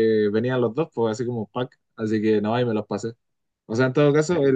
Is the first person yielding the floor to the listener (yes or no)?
no